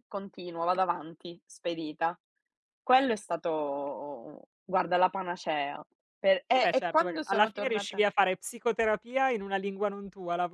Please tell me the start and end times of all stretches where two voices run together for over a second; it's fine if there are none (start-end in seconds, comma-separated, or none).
6.5-8.0